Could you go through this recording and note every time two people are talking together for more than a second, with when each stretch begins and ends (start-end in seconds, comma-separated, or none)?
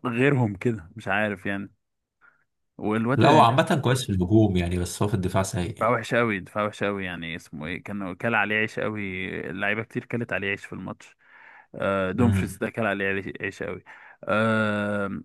none